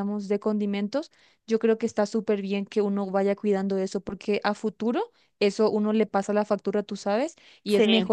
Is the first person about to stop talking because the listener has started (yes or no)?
no